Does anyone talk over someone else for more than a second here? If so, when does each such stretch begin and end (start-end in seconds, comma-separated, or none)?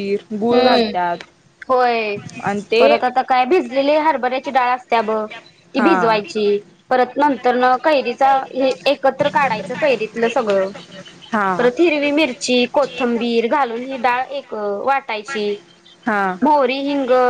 none